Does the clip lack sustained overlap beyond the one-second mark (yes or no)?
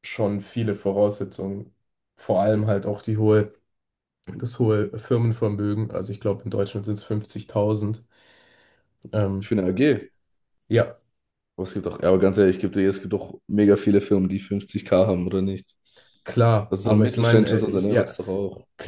no